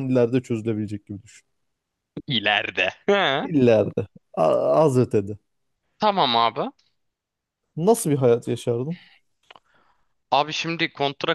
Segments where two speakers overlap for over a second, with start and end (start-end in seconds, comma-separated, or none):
none